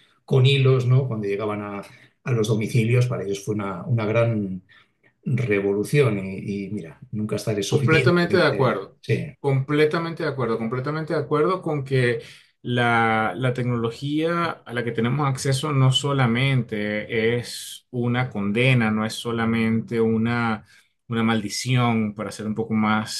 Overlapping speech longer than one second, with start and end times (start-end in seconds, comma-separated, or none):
7.7-9.0